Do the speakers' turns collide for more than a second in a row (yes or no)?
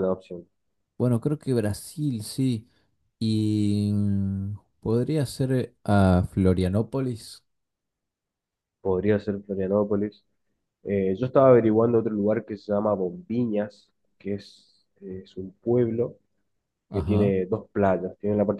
no